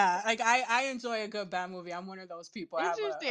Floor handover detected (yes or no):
yes